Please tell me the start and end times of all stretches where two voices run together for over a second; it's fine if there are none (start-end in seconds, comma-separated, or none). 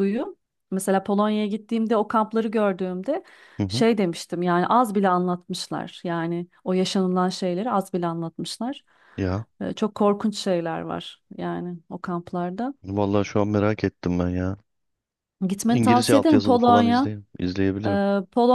15.7-17.1